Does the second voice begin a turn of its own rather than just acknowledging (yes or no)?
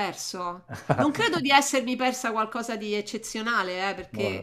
no